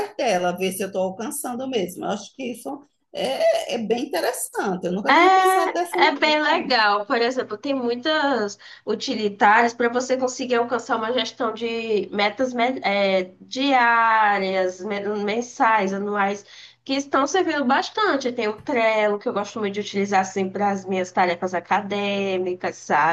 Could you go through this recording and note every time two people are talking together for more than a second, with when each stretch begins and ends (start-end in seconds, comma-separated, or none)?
5.1-6.4